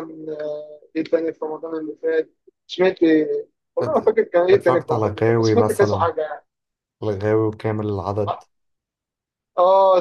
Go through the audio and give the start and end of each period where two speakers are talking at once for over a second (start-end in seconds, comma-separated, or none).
3.8-6.1